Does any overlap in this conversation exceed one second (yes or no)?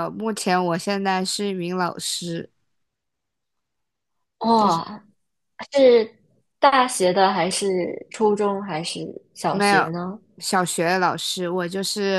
no